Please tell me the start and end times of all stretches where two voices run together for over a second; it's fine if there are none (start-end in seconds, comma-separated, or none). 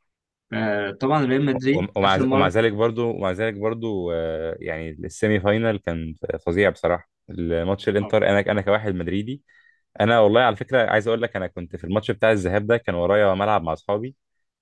none